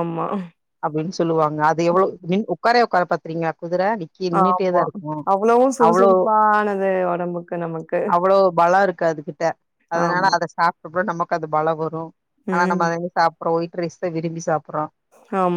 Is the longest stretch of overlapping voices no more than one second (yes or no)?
yes